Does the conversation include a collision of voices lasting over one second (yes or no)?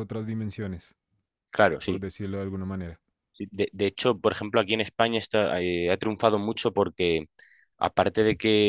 no